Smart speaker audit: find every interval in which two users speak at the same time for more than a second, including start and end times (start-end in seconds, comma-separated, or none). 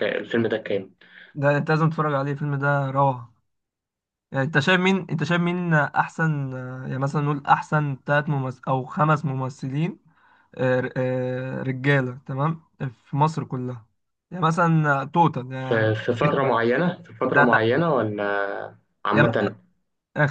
none